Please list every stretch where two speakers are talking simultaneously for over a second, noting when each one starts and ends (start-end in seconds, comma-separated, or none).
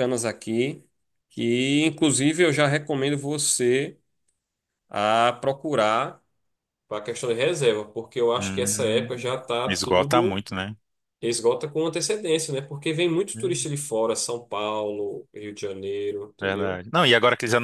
8.4-10.4